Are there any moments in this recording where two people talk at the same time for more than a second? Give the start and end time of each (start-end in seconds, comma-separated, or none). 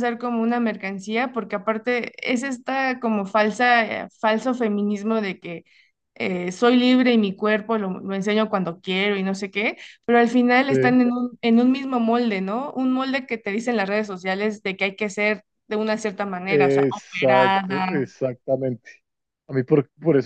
16.4-18.1